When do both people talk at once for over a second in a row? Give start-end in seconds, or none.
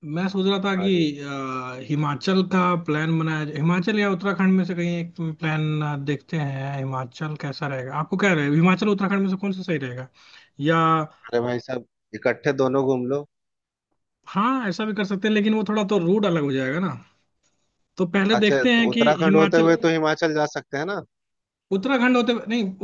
18.3-19.7